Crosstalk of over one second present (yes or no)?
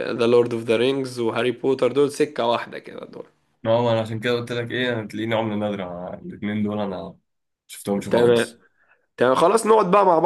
no